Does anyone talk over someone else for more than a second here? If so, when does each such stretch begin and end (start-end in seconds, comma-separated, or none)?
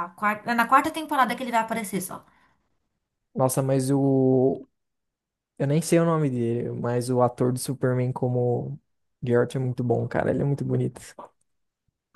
none